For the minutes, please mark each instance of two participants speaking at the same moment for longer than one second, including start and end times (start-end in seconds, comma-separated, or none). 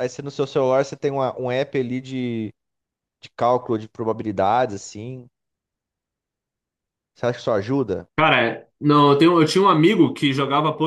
none